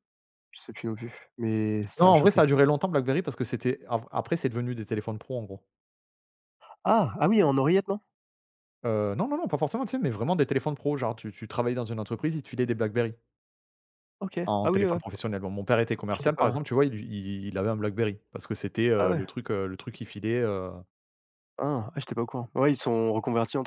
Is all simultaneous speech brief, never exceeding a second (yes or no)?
yes